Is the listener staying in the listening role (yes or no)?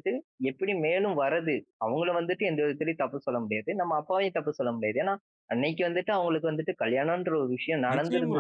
no